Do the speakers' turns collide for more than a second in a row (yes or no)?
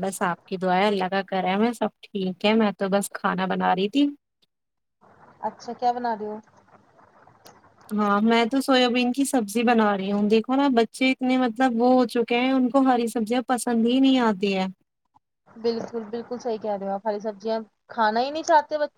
no